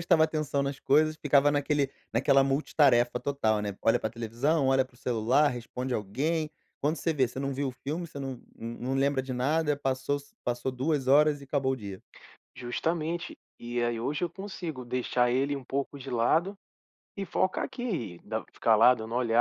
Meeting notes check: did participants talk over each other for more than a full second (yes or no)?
no